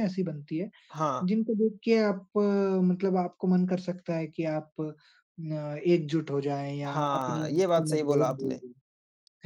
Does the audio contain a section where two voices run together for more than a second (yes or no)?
yes